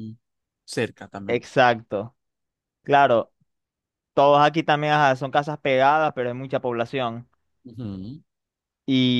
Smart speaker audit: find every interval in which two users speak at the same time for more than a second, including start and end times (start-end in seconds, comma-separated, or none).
none